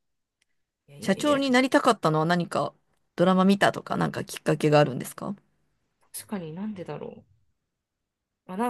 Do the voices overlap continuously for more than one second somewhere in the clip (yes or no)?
no